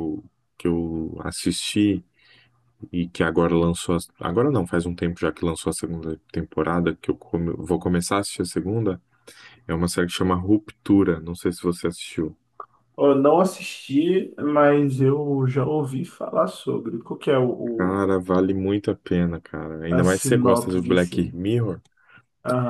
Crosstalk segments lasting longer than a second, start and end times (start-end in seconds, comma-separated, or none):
19.9-21.4